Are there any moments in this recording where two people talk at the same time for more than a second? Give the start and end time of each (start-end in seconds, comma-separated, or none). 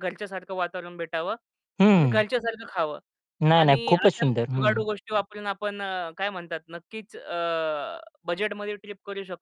3.5-4.8